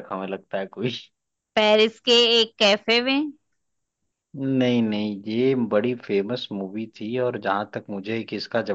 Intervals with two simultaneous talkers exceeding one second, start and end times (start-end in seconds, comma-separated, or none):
none